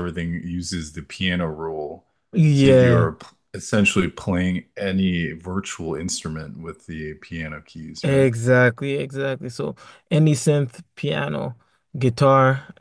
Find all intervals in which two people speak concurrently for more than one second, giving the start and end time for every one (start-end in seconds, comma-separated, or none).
none